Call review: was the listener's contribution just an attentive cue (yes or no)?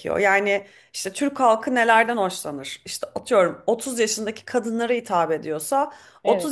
yes